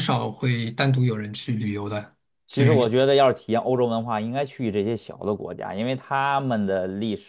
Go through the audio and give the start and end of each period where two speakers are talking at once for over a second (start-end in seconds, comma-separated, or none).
none